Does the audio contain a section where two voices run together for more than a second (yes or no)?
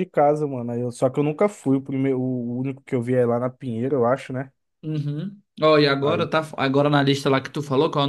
no